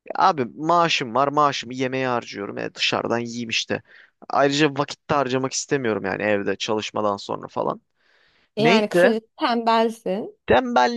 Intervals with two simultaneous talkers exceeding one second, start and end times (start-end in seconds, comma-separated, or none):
none